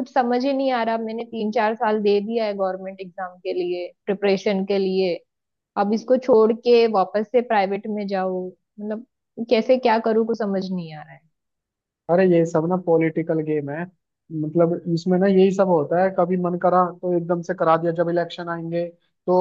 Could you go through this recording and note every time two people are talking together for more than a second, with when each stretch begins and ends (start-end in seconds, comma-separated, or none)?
none